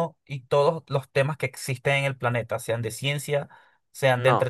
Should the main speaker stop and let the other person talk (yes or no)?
no